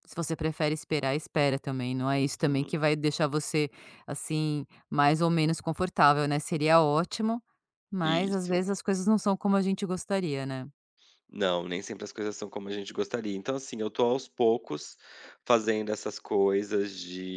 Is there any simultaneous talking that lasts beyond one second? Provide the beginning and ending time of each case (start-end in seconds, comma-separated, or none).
none